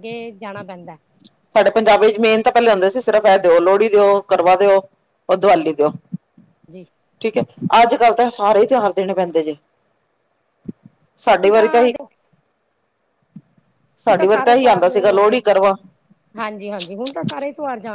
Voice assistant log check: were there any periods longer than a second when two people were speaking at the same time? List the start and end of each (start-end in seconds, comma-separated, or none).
14.0-15.6